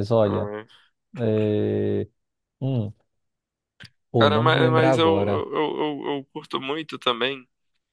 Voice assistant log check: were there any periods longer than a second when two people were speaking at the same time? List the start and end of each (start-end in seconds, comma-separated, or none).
4.2-5.5